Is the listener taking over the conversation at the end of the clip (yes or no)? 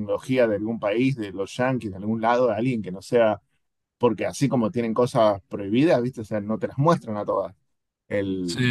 no